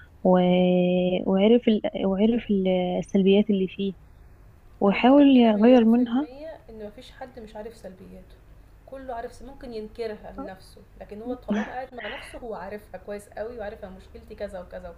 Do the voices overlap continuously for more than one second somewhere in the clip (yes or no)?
yes